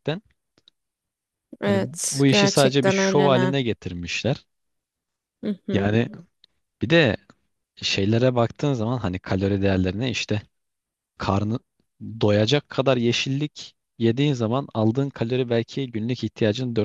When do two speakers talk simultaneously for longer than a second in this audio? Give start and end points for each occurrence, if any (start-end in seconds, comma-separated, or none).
1.6-3.5